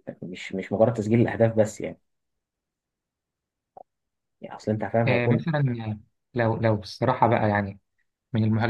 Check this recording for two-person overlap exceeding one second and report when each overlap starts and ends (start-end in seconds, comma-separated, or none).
none